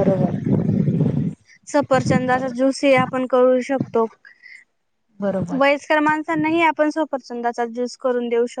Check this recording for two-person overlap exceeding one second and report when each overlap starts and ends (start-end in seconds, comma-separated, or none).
none